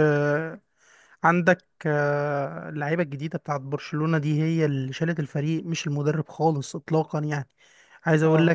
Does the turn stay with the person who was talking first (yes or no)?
yes